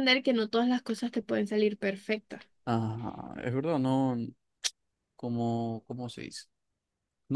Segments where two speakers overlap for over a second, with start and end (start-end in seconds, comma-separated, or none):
none